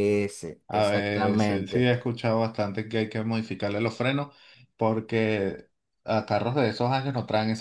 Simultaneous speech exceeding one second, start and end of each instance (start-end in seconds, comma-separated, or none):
0.7-1.9